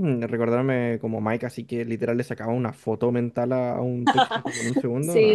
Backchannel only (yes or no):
no